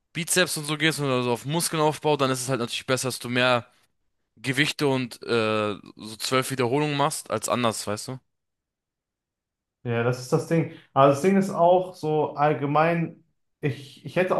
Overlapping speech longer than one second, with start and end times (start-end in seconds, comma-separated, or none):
none